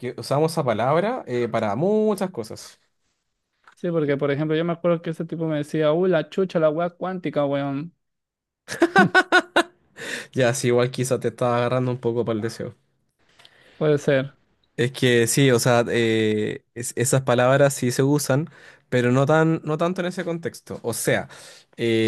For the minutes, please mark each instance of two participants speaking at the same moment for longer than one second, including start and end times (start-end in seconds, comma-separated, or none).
none